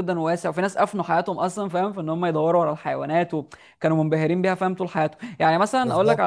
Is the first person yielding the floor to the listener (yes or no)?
no